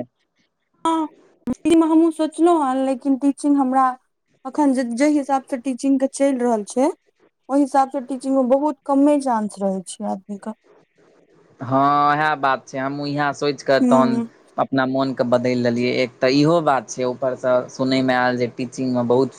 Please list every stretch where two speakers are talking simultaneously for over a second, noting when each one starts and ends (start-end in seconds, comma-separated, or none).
none